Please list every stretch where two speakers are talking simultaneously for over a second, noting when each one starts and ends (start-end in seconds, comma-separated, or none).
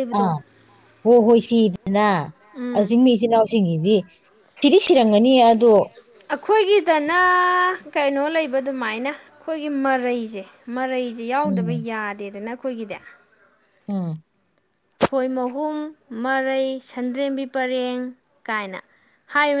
none